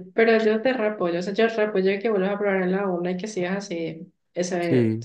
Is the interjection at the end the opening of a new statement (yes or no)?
no